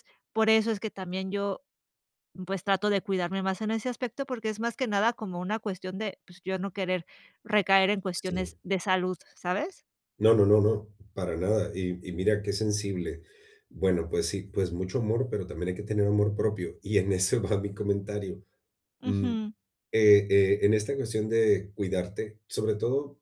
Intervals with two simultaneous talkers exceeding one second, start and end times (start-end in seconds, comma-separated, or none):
none